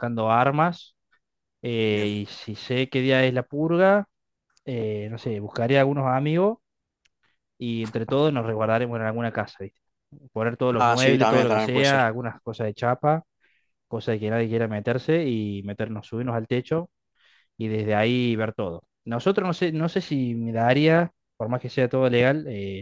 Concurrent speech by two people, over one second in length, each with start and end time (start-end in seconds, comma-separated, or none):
10.7-12.0